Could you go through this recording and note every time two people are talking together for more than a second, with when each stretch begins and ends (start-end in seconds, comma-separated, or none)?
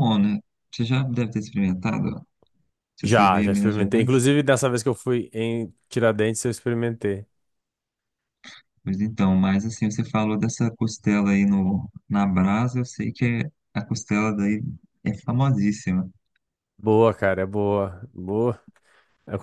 3.0-4.2